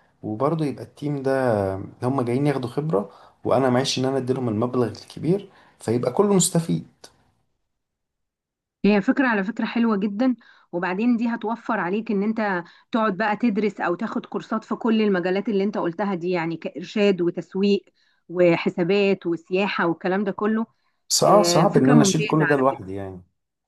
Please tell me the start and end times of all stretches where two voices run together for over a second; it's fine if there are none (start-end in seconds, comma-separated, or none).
21.2-22.9